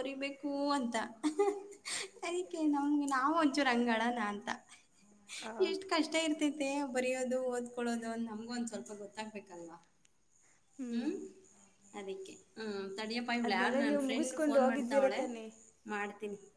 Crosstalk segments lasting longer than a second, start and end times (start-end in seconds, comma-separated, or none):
13.5-15.2